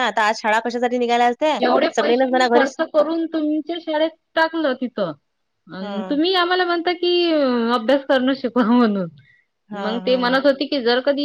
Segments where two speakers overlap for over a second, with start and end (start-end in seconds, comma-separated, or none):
none